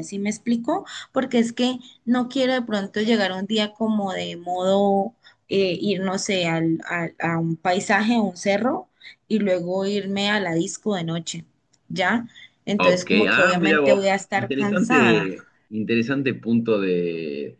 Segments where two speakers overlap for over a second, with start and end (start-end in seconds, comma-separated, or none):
12.8-15.3